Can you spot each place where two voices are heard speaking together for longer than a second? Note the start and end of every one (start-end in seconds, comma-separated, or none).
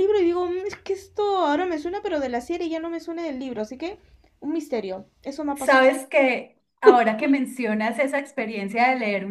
none